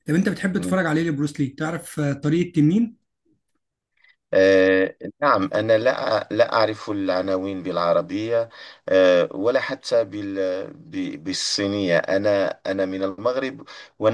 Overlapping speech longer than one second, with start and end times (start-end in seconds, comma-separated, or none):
none